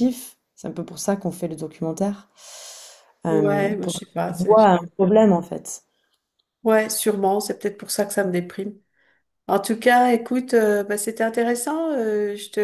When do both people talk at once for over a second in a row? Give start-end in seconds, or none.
3.3-4.7